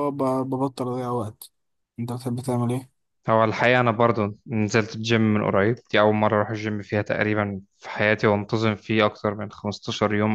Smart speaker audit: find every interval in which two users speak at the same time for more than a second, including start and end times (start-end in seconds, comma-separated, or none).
none